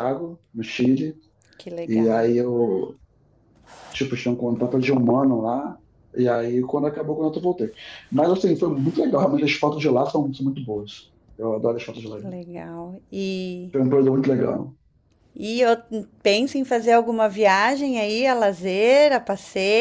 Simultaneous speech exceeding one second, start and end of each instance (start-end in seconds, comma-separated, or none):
none